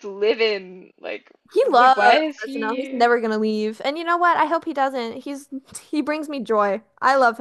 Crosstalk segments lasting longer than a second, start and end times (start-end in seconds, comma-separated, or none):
1.5-3.1